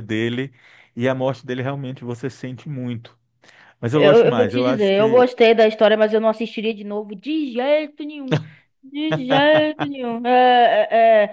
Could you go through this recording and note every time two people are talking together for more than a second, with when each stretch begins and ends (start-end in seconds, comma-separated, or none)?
3.9-5.2